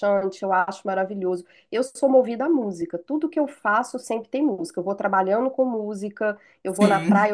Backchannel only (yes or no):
yes